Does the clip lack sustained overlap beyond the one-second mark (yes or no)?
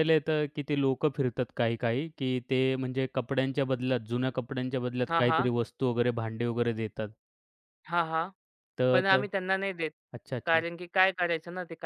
yes